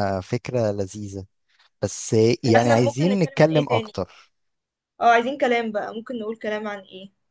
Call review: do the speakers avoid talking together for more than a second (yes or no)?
no